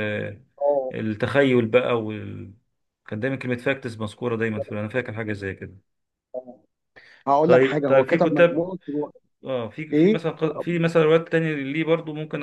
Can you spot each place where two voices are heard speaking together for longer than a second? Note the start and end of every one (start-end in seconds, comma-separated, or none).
7.5-8.7